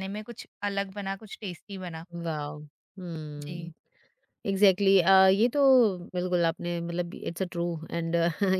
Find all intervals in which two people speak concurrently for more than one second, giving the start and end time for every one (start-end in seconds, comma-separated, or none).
none